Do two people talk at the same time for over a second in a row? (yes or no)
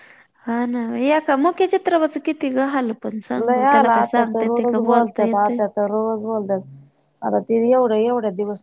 yes